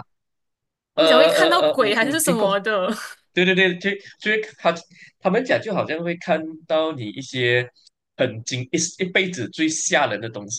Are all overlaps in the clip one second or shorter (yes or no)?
no